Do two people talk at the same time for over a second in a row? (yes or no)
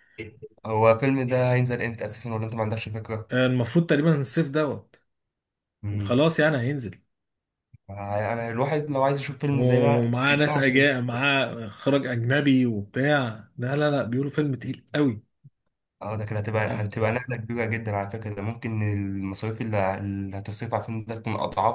yes